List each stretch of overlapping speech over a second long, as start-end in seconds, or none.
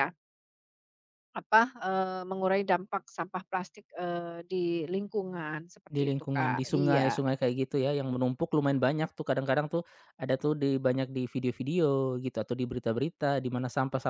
5.9-7.2